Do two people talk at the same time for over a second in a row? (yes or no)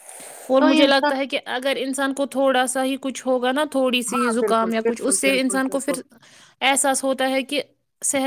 yes